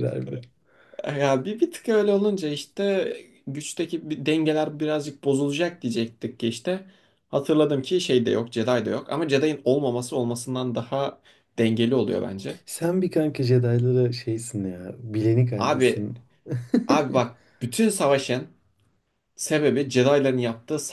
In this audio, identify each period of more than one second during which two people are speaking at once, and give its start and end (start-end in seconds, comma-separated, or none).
none